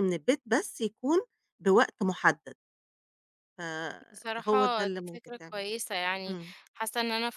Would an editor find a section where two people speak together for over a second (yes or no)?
yes